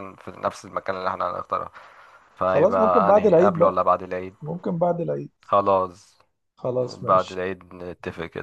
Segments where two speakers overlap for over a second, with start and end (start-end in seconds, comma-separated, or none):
2.5-3.8